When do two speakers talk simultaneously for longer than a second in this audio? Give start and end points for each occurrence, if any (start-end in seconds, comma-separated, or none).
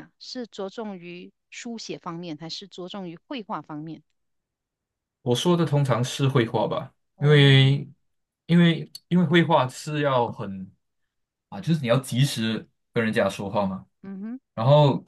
none